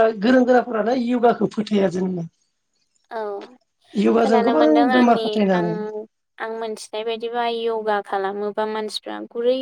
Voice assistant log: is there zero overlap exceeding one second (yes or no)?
yes